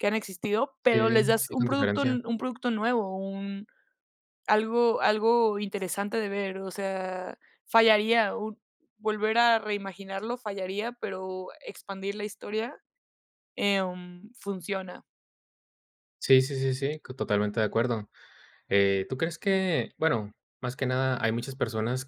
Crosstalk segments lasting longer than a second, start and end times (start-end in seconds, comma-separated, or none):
0.9-2.2